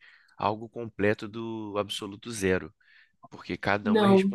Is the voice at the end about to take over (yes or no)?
no